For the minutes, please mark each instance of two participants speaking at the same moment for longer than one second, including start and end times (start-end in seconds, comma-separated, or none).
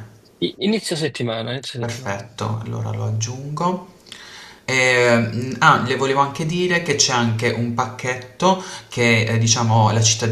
none